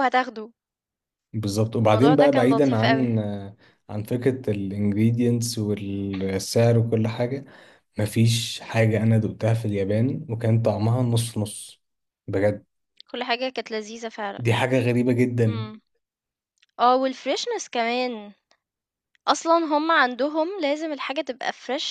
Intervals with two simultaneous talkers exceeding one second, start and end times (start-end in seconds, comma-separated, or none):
1.9-3.2